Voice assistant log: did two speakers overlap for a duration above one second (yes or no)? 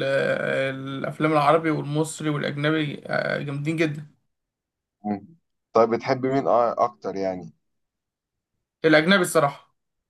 no